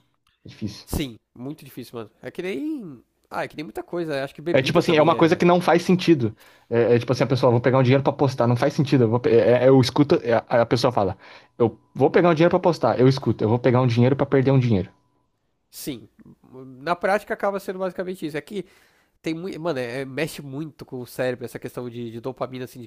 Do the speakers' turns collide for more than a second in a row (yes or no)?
yes